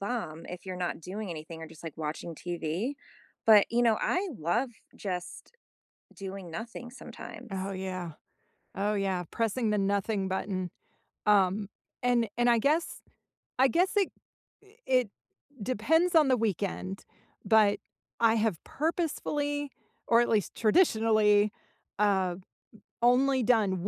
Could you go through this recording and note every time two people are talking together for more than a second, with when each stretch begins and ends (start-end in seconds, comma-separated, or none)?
none